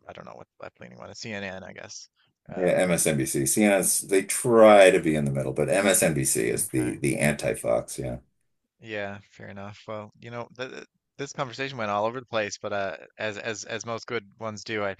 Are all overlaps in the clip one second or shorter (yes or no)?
yes